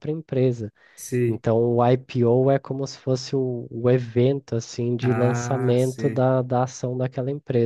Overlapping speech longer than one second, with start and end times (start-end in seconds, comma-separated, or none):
5.0-6.2